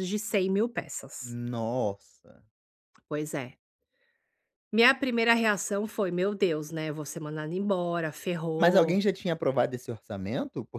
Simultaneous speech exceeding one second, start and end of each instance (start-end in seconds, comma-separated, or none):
none